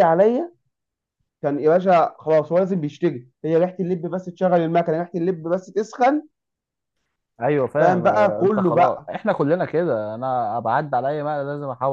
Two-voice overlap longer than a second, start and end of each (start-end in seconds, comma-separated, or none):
7.8-9.1